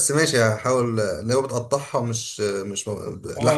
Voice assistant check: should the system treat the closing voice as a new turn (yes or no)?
yes